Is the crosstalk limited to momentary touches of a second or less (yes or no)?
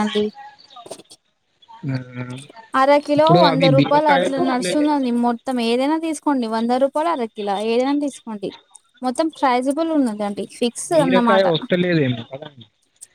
no